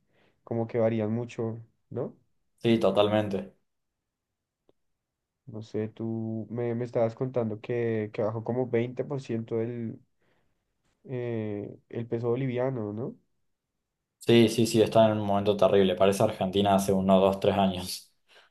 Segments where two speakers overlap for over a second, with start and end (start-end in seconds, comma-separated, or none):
none